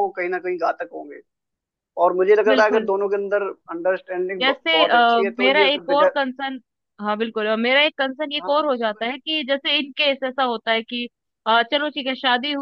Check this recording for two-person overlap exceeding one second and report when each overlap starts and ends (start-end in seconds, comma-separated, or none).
4.4-6.1